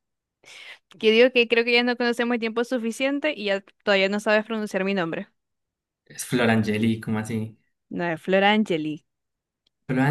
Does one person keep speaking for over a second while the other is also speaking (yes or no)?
no